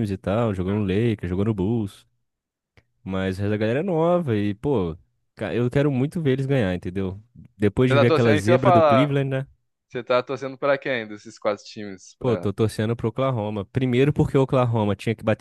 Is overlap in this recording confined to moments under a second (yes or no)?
no